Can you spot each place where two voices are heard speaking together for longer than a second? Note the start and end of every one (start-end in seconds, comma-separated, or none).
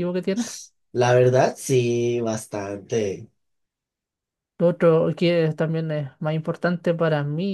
none